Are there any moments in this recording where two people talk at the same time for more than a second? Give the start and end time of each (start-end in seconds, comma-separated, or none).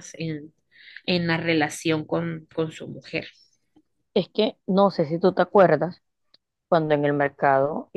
none